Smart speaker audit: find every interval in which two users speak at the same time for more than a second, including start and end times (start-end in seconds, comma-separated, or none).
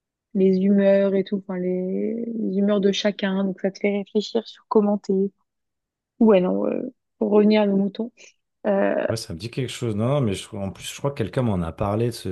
none